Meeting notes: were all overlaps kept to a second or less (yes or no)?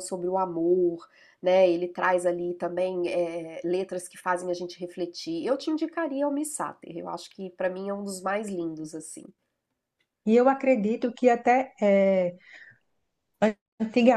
yes